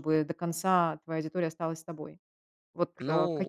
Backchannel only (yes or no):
yes